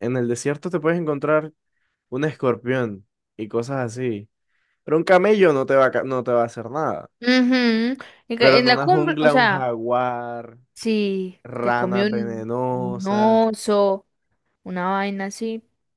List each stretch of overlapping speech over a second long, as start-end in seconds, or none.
8.4-9.7, 11.4-13.5